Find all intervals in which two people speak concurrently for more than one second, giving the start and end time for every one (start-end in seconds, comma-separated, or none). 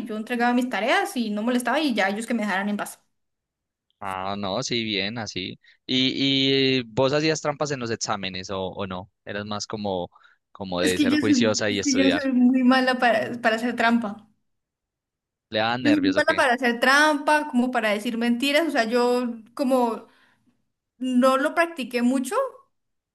10.8-12.2